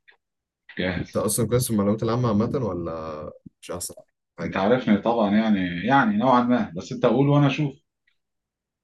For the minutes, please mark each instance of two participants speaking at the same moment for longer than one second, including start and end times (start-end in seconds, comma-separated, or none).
none